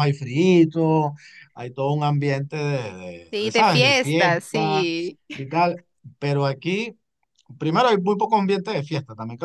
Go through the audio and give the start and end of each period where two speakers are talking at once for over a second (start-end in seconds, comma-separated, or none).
3.3-4.8